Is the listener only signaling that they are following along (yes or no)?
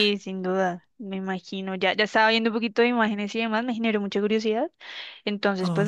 yes